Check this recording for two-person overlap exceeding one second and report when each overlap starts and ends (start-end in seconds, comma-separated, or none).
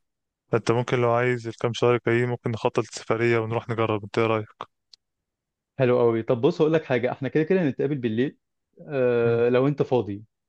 none